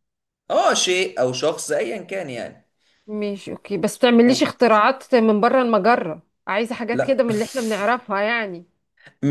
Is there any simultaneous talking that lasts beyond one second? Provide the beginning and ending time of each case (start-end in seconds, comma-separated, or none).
none